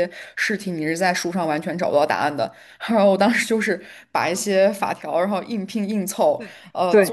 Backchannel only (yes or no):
yes